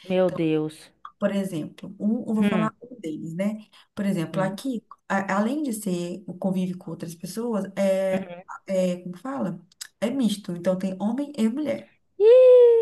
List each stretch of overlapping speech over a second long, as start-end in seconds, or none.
none